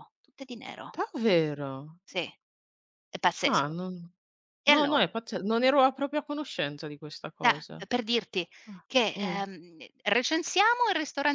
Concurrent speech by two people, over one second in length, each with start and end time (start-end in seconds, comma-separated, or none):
none